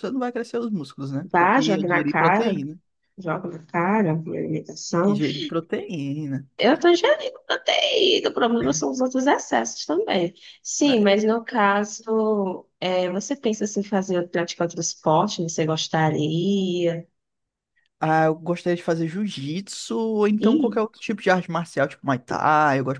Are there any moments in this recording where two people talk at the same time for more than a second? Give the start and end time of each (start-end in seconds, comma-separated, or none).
1.2-2.6